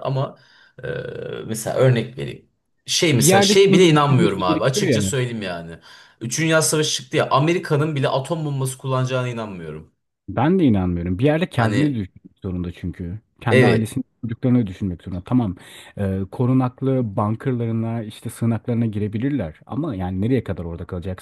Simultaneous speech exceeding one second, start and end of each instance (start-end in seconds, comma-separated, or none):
3.2-5.2